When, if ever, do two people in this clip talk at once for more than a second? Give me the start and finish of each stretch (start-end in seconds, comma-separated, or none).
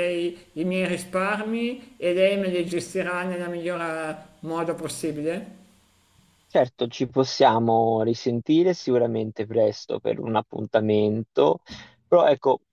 none